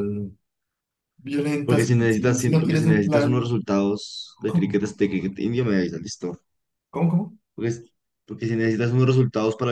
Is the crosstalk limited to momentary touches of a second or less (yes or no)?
no